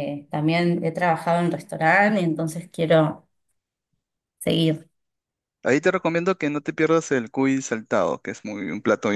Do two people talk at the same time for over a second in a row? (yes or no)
no